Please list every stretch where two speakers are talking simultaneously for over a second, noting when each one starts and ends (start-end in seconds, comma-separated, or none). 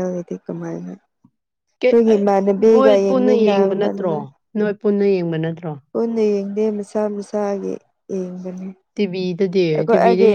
2.7-4.1